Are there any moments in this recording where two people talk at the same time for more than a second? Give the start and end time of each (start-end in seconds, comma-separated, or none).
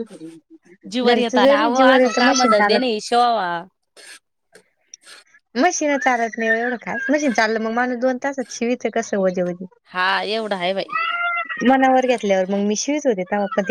1.1-2.9